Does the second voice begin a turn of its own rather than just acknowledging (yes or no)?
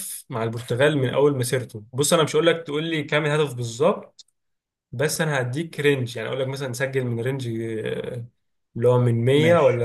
no